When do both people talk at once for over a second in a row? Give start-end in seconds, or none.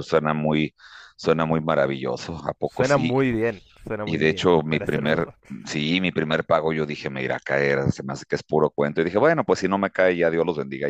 4.0-5.3